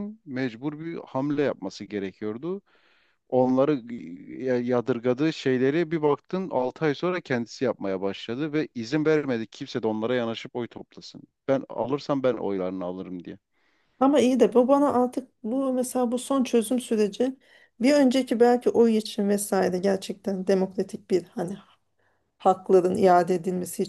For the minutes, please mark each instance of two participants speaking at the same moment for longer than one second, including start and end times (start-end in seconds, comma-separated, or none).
none